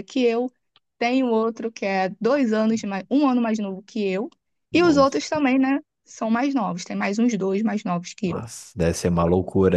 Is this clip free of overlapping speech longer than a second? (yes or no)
yes